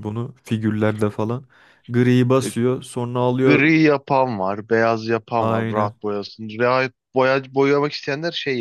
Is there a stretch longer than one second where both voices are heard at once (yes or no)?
no